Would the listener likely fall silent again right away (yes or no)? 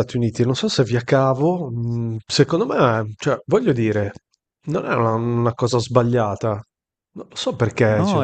no